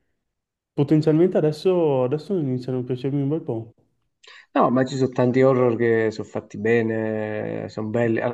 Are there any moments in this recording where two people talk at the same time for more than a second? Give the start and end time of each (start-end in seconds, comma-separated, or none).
none